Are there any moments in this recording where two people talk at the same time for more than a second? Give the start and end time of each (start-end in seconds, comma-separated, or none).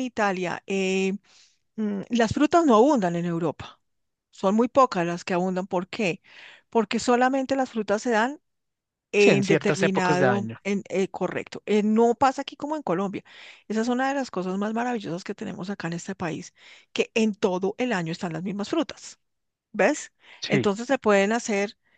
9.2-10.6